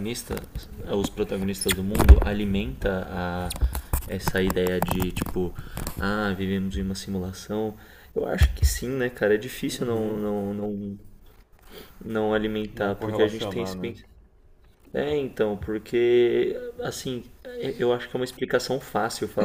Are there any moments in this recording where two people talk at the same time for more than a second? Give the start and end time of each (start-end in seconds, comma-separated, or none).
12.7-13.9